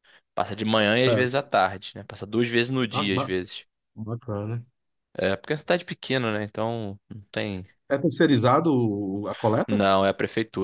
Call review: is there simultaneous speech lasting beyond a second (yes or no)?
no